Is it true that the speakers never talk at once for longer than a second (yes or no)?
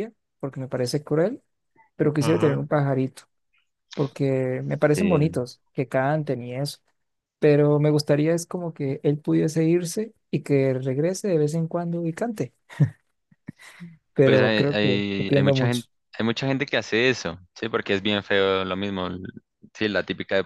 no